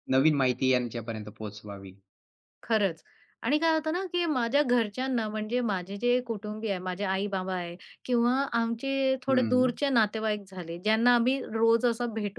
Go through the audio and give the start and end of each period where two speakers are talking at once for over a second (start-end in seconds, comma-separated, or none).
none